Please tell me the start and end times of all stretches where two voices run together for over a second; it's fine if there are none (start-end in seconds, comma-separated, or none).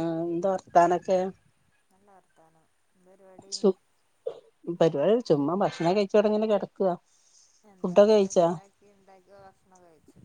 none